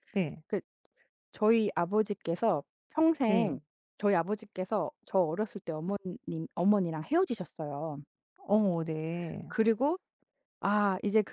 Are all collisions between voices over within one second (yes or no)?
yes